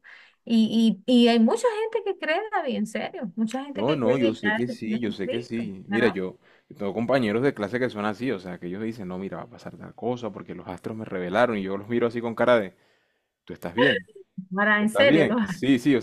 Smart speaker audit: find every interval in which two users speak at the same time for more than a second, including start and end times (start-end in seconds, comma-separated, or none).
3.7-6.2